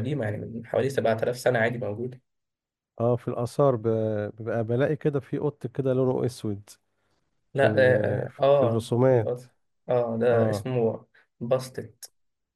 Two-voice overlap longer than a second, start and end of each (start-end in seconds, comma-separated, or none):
7.5-9.4